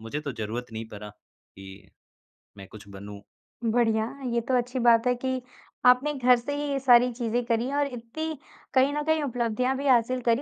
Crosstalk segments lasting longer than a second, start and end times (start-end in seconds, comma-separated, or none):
none